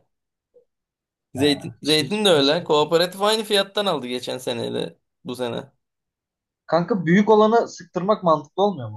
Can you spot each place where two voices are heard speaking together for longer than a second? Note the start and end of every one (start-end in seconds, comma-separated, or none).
1.4-2.6